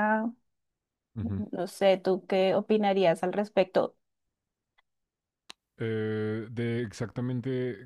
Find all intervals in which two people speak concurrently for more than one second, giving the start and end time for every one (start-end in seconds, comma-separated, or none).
none